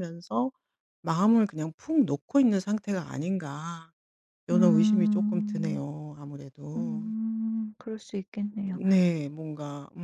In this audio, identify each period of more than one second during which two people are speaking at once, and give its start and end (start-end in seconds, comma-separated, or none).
4.5-5.8